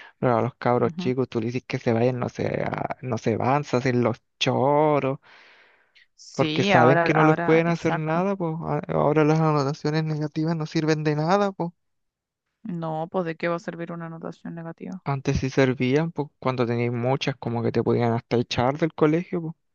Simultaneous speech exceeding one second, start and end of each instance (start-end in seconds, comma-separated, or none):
6.3-8.3